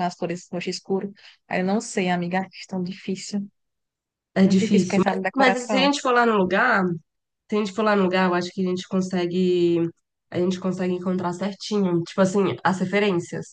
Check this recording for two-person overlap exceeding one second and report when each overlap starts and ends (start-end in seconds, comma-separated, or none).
4.4-5.9